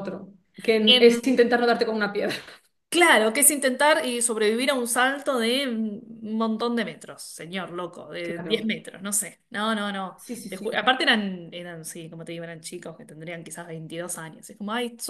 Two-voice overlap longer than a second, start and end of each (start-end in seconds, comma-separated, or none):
none